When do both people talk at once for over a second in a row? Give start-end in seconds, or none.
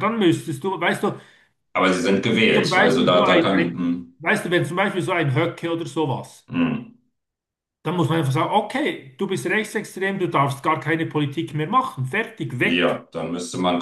2.5-4.1